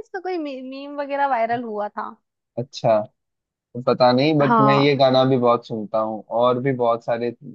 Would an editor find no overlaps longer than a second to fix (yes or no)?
yes